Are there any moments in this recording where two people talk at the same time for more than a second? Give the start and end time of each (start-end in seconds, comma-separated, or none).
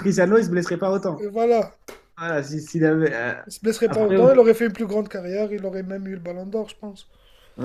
none